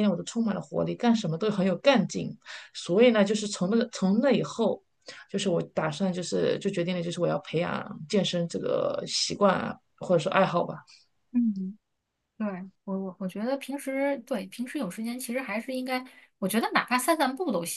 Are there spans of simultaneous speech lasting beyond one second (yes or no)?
no